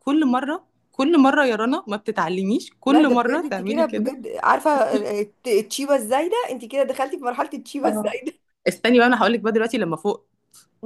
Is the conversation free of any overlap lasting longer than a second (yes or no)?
no